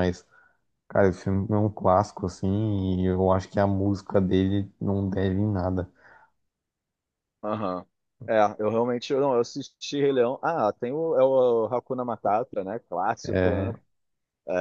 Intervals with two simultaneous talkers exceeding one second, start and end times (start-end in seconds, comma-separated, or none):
none